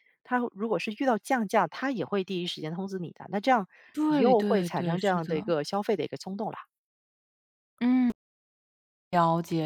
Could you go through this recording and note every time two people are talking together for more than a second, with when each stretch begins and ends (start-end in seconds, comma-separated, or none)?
4.0-5.3